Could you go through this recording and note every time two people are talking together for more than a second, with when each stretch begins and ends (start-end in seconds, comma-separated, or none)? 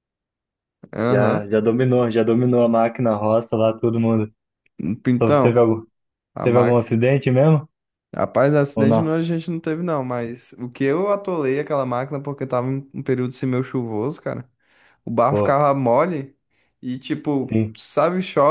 none